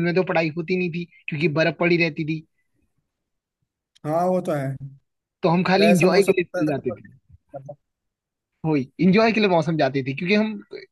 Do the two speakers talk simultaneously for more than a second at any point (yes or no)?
yes